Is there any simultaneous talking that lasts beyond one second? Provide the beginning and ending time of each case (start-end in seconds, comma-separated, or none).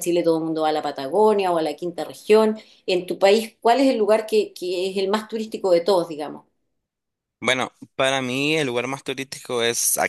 none